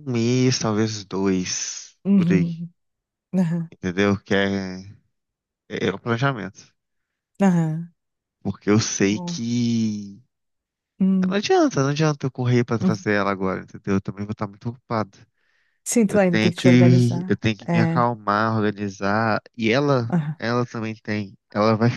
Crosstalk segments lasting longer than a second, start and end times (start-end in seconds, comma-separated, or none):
16.1-18.1